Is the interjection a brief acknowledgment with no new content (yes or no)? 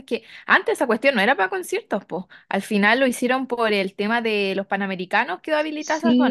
no